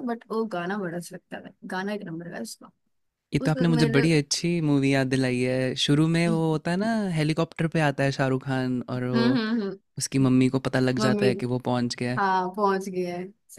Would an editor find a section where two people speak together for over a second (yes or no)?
no